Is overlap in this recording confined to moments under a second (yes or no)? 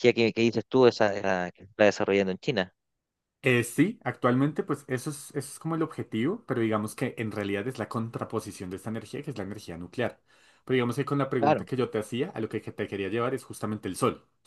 yes